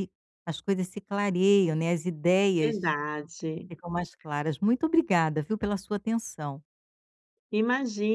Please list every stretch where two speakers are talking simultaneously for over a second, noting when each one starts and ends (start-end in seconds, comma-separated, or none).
none